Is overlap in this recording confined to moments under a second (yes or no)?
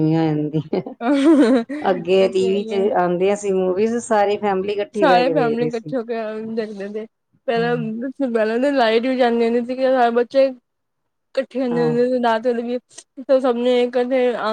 no